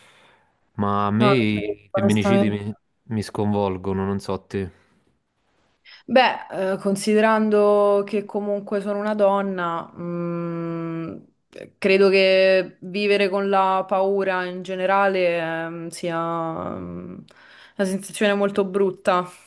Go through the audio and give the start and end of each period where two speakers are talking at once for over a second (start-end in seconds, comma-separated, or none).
1.2-2.6